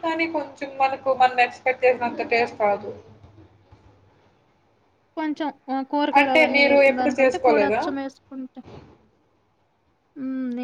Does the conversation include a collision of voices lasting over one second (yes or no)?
yes